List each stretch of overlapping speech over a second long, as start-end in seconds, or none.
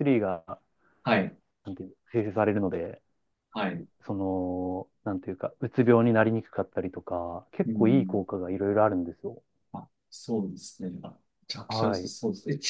none